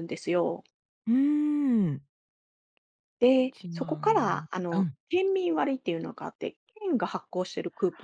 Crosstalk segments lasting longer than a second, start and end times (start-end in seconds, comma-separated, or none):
3.3-5.0